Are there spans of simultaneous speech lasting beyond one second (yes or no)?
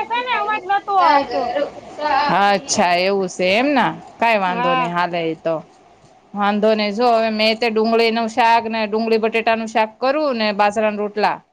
no